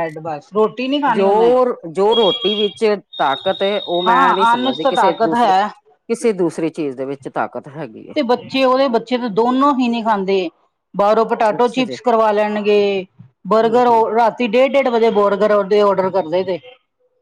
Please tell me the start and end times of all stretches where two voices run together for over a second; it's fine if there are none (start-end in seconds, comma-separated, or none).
4.1-5.5